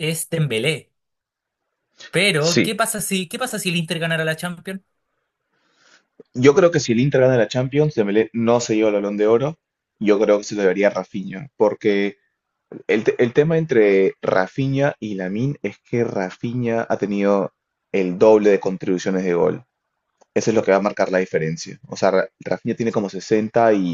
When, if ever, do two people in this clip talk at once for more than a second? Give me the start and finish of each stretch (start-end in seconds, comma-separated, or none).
none